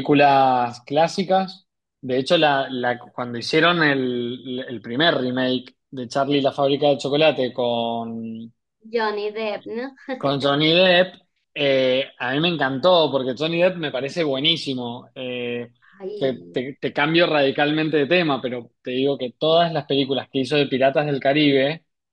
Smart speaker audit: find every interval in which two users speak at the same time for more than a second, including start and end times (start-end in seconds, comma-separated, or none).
none